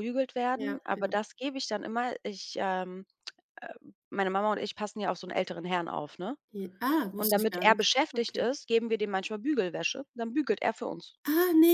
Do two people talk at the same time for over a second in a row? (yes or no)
yes